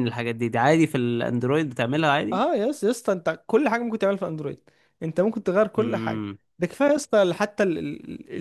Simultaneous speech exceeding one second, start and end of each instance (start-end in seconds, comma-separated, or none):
none